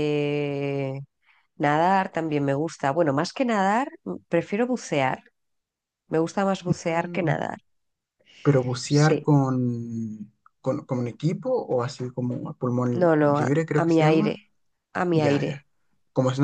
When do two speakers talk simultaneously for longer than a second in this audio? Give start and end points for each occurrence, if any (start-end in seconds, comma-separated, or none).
12.9-14.4